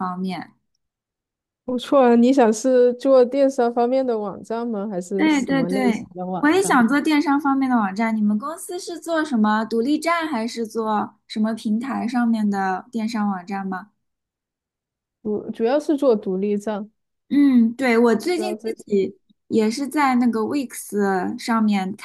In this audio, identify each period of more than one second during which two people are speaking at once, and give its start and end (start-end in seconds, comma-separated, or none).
5.2-6.8